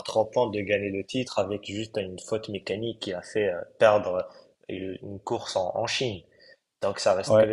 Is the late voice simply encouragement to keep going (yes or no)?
yes